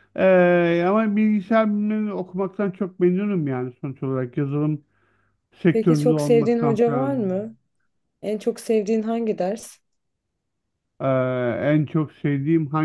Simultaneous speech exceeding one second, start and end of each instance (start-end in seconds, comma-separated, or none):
5.7-7.2